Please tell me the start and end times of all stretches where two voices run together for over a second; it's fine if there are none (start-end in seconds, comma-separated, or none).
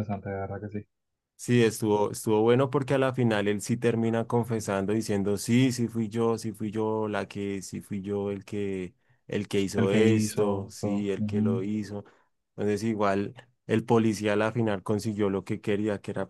9.8-11.7